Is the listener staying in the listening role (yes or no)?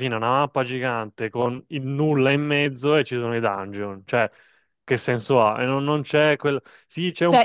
no